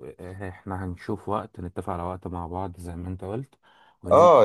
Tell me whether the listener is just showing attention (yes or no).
no